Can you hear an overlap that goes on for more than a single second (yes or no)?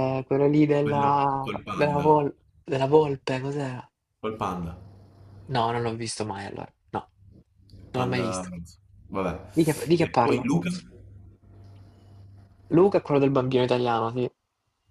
yes